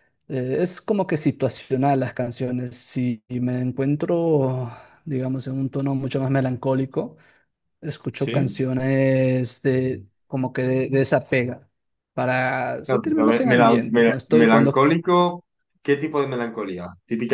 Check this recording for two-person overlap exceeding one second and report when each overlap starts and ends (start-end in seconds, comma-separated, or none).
12.8-14.7